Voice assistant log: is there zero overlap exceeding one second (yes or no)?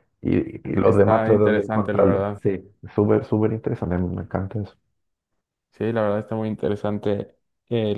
no